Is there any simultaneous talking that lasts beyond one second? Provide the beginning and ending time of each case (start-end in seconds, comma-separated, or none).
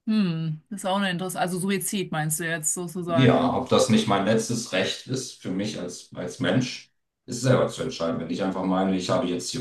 none